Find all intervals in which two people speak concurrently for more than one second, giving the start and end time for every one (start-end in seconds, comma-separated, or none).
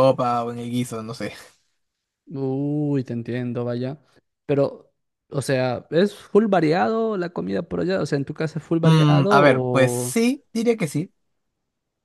8.8-10.2